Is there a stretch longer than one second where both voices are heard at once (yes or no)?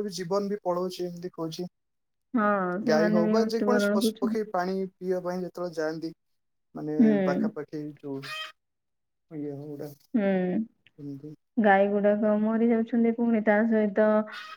yes